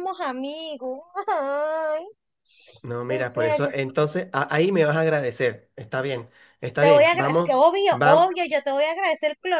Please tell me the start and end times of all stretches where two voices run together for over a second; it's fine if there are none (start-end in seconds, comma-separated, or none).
6.8-8.3